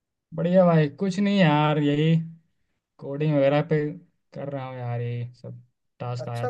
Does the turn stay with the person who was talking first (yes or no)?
no